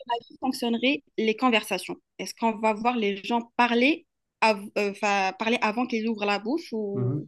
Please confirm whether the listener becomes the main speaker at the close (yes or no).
yes